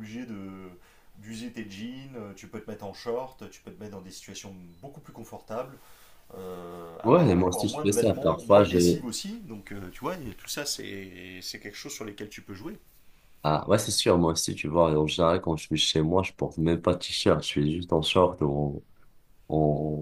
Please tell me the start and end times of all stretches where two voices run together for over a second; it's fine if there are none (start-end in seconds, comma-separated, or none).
7.0-8.8